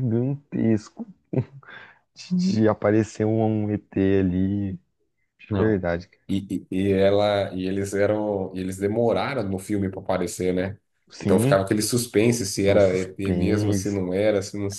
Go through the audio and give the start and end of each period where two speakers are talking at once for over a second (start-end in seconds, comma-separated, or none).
12.7-14.0